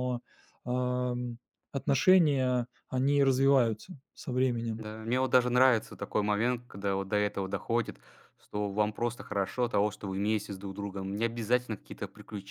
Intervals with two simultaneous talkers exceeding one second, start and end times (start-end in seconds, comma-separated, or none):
none